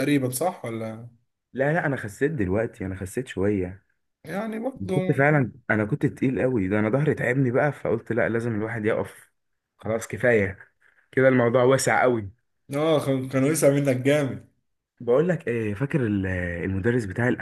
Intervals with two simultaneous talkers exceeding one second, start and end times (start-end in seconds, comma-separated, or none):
none